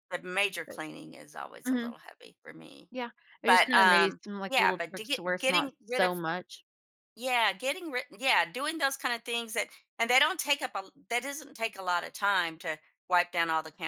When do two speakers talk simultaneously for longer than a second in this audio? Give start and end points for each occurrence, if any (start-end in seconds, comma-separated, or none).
3.5-6.1